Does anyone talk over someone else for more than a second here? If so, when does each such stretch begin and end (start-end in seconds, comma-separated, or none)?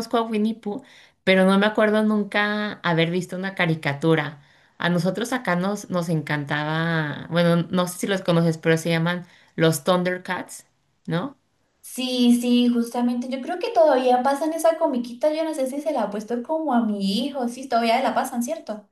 none